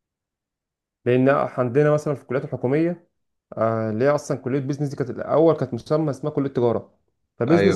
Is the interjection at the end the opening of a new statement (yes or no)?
no